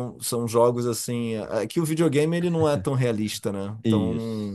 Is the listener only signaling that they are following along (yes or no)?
no